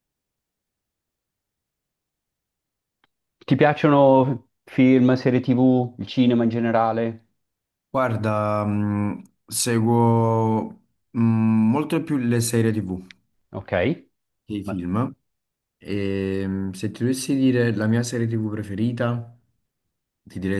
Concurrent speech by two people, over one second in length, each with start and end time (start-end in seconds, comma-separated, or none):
none